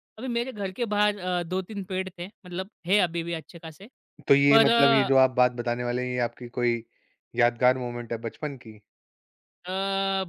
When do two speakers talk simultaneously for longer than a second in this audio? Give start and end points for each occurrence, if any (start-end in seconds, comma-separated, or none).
none